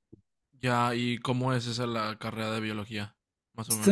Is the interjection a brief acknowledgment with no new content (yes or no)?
no